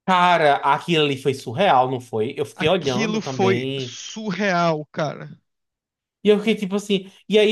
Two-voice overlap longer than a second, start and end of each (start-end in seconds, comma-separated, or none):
2.6-4.0